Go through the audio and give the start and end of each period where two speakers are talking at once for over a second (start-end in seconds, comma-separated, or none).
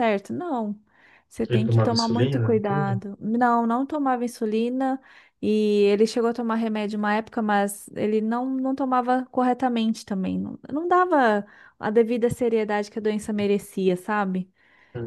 1.5-2.9